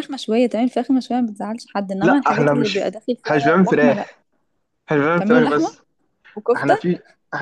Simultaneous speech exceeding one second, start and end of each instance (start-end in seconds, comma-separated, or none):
2.0-4.1